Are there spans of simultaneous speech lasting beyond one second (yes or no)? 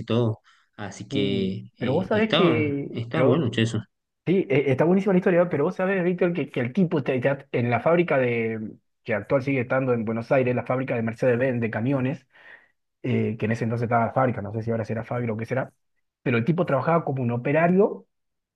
yes